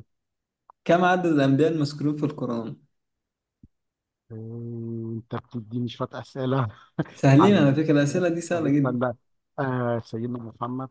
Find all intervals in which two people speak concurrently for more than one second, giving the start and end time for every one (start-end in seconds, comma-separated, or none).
7.4-9.0